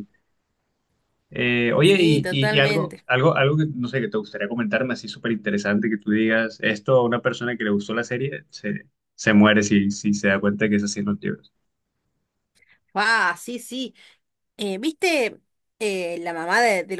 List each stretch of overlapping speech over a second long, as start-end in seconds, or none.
1.8-3.1